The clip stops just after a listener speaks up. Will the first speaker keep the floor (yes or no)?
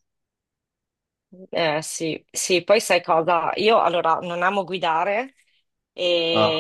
yes